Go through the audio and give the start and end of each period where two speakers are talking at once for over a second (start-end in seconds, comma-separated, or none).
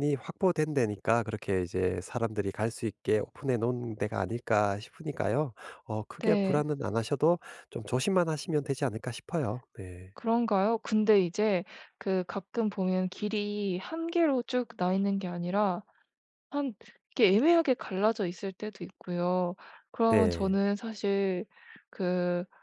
none